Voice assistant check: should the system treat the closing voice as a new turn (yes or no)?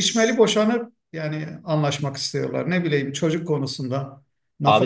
yes